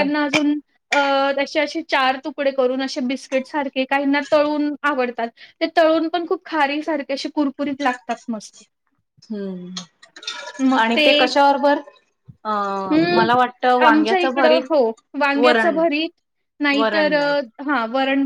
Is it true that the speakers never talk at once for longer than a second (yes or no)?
yes